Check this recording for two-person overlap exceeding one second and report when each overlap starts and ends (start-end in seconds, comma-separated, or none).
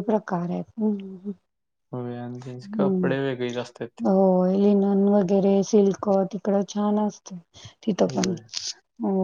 2.8-4.0